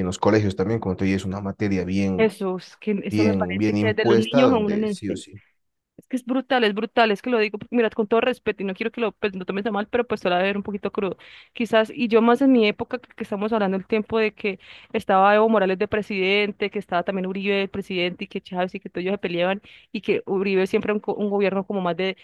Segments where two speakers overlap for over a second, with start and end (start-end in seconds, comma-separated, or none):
3.1-5.2